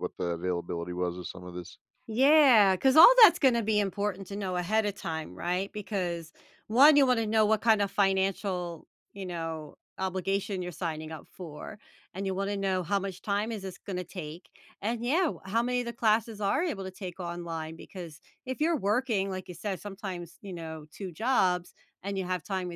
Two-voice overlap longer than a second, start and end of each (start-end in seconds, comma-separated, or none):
none